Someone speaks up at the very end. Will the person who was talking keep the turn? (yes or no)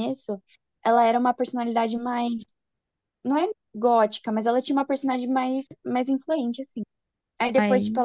yes